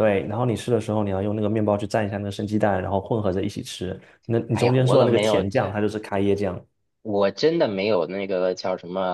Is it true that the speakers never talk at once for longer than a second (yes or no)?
no